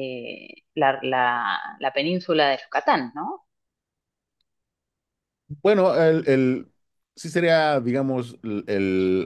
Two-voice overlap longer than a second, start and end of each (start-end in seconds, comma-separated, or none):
none